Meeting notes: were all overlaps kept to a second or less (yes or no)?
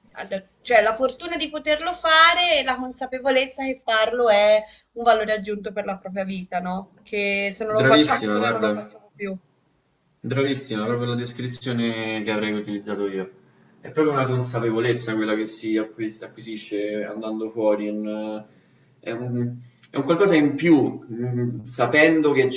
no